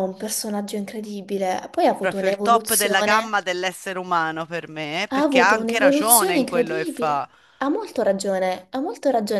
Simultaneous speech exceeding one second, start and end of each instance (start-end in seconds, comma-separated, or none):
2.0-3.4, 5.1-7.3